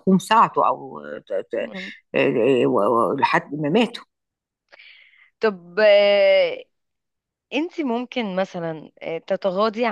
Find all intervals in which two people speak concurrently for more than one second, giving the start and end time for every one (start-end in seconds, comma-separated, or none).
none